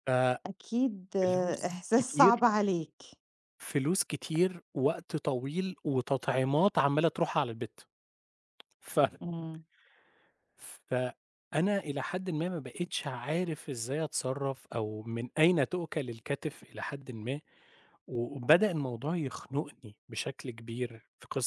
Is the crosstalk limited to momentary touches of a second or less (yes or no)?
no